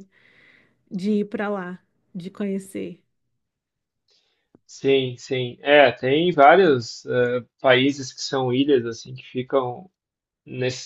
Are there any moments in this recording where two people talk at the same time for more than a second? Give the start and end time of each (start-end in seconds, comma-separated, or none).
none